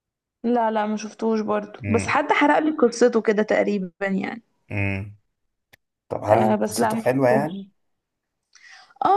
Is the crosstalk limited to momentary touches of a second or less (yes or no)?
no